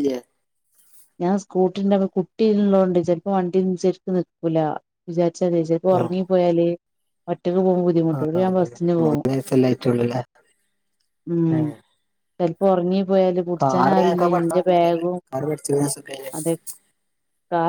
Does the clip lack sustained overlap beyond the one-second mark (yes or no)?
yes